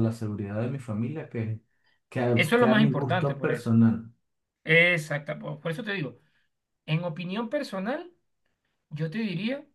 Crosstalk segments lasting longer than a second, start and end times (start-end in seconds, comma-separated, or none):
2.3-3.7